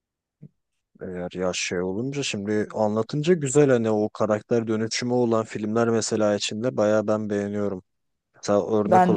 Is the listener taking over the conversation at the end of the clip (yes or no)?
no